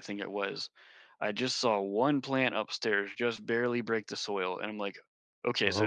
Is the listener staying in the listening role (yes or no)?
yes